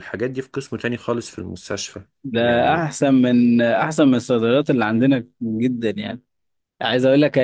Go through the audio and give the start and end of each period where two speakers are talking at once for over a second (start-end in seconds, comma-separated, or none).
none